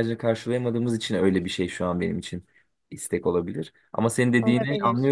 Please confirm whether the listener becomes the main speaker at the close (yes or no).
no